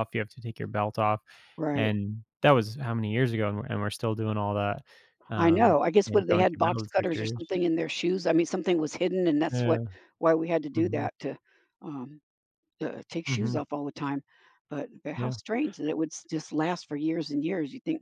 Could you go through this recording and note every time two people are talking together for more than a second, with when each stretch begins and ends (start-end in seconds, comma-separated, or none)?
5.4-7.4